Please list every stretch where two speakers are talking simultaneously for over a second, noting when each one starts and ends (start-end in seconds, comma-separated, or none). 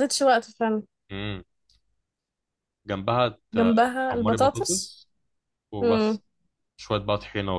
3.5-5.0